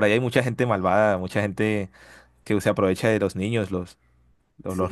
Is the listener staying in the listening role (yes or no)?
no